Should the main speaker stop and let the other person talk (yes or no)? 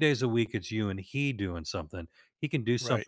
no